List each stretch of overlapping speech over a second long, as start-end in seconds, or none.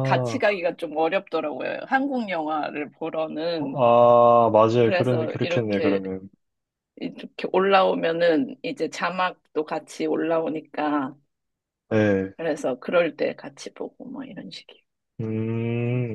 4.8-6.0